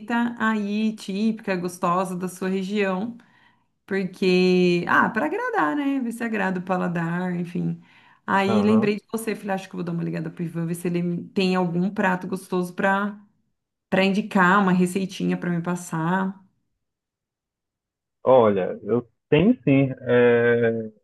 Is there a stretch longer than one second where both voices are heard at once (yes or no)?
no